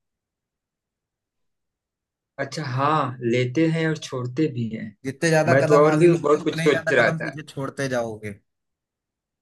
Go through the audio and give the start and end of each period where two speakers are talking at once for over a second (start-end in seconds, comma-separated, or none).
5.5-7.3